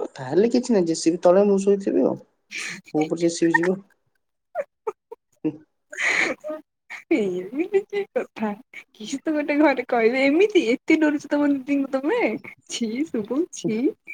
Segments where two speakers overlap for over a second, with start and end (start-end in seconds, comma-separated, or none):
none